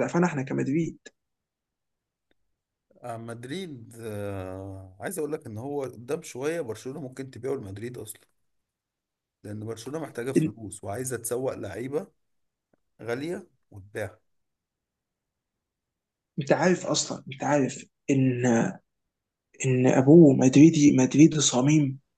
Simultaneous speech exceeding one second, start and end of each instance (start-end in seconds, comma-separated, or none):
none